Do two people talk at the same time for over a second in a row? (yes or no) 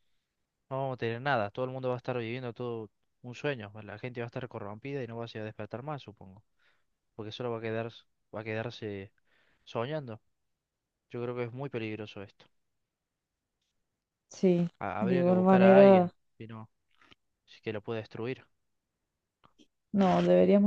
yes